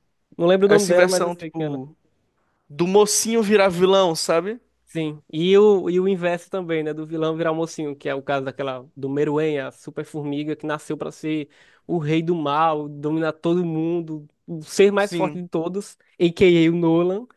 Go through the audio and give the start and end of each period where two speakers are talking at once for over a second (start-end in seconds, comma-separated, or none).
0.7-2.0